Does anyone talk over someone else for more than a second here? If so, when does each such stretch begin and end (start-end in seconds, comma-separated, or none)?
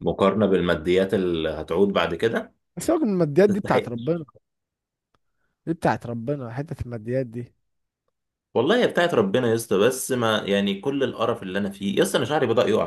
none